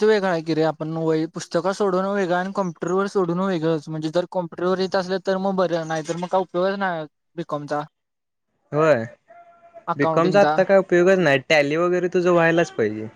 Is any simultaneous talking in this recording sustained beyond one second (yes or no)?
no